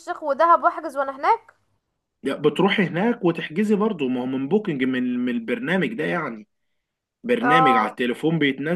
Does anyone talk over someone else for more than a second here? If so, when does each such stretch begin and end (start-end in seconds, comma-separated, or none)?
none